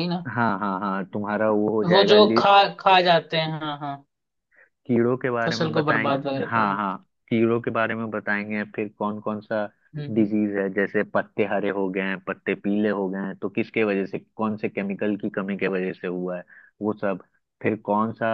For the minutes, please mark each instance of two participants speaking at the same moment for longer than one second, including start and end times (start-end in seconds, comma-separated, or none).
5.5-6.8